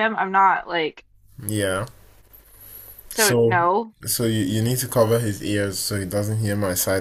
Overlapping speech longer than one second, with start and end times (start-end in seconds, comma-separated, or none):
none